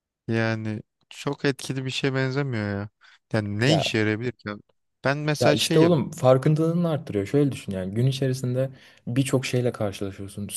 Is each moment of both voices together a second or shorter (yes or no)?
yes